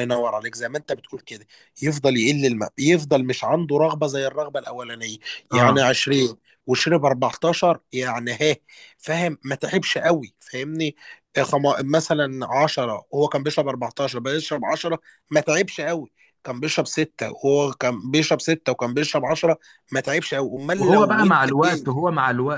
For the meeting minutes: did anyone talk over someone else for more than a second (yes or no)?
yes